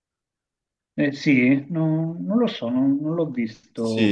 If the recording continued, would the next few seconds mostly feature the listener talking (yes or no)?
yes